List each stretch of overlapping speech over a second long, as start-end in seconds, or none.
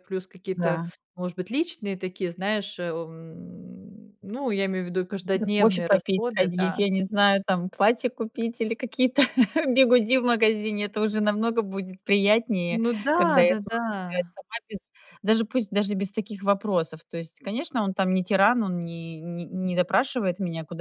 5.3-6.8, 12.7-14.3